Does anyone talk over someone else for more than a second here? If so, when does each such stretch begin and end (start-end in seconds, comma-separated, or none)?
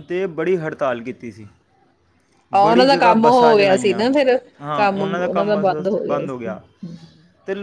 2.6-4.0